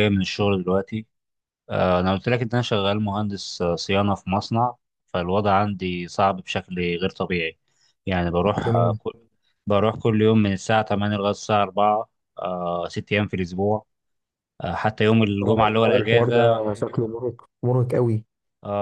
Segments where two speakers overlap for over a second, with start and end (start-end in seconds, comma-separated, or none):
15.4-16.7